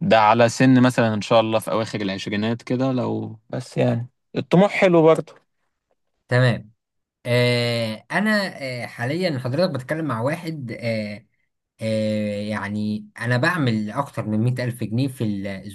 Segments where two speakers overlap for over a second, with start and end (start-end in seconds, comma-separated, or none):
none